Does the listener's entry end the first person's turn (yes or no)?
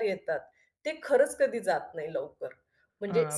yes